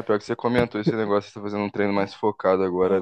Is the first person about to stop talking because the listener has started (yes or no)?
yes